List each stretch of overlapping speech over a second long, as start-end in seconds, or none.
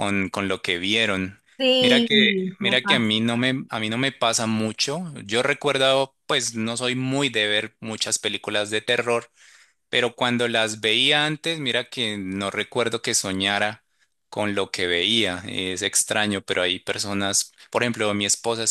1.8-3.1